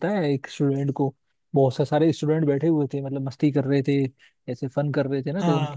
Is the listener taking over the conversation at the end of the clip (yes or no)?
no